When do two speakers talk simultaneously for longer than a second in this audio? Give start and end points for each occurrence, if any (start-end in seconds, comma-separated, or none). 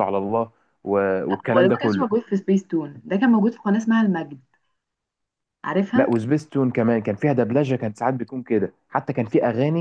none